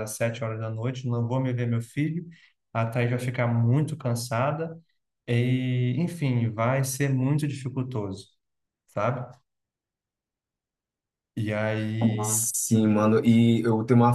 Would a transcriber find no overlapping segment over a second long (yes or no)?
yes